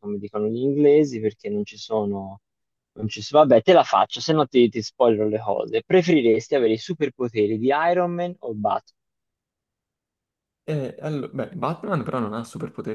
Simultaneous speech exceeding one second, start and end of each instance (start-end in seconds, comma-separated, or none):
none